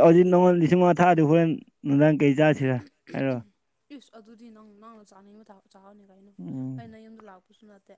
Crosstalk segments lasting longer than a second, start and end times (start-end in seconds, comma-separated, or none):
none